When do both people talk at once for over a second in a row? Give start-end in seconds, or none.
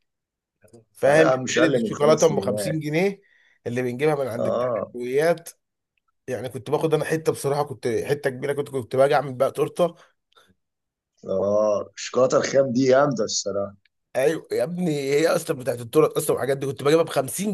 1.1-2.5